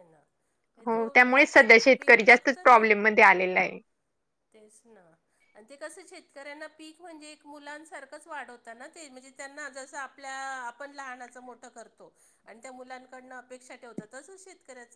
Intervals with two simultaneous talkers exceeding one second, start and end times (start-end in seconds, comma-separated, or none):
0.8-2.9